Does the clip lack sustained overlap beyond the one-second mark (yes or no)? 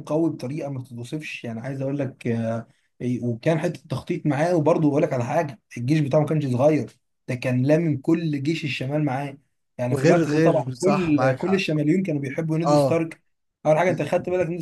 no